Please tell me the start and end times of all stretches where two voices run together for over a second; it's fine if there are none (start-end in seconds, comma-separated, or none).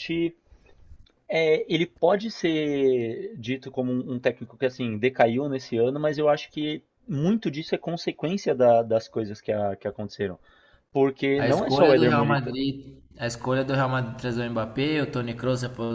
11.3-12.6